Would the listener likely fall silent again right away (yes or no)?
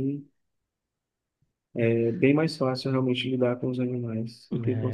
no